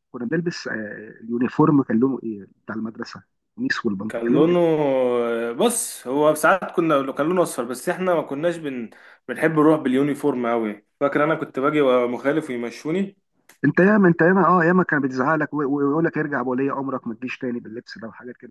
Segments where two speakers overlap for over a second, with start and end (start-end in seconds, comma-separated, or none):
none